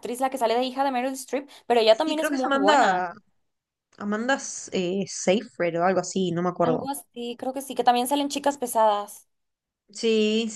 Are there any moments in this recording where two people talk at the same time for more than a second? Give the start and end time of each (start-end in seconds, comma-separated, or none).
1.9-3.1